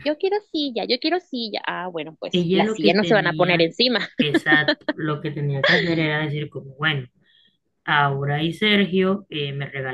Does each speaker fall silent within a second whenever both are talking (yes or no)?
no